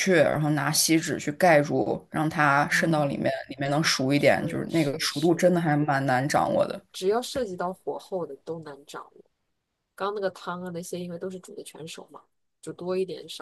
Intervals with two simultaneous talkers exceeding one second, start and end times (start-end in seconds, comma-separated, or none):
4.2-5.4